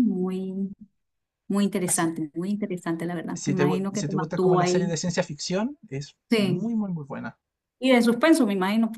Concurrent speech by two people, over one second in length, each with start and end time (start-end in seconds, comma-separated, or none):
3.3-5.0